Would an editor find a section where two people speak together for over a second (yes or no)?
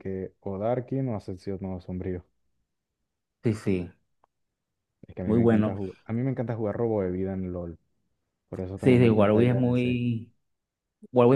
yes